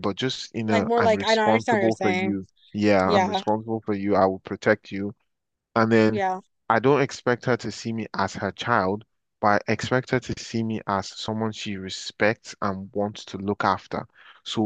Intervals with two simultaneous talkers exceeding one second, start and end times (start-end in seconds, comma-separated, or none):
0.6-2.4